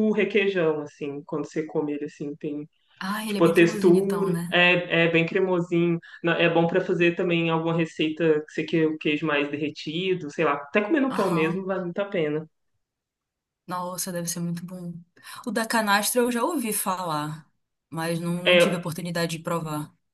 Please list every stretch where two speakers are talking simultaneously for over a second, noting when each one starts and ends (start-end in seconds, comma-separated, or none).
3.2-4.6